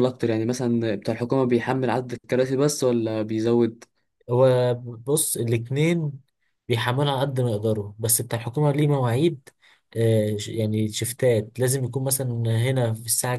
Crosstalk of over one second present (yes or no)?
no